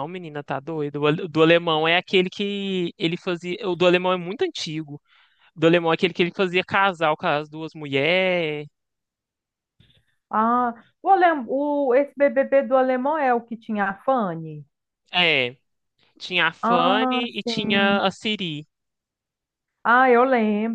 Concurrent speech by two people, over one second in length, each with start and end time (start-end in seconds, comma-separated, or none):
16.6-18.0